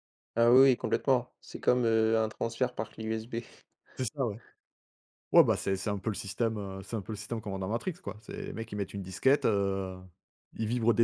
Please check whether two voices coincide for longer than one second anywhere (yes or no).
no